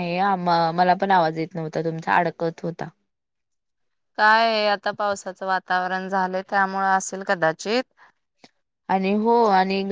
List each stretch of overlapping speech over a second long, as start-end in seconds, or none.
none